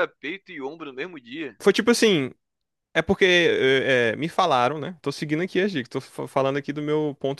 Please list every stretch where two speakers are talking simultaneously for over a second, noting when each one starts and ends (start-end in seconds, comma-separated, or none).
none